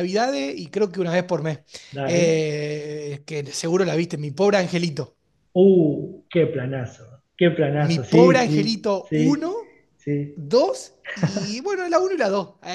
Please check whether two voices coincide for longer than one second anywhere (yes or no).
yes